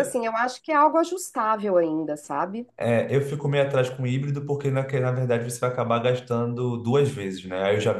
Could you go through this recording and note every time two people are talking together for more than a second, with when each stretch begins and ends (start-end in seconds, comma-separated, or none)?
none